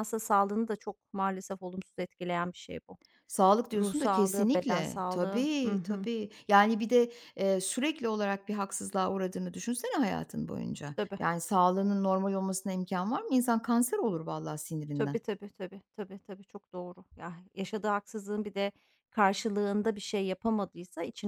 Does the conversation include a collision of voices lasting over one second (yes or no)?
yes